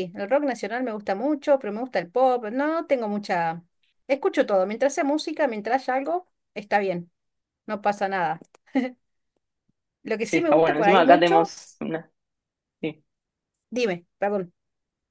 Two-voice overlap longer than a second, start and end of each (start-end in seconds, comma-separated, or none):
10.2-11.5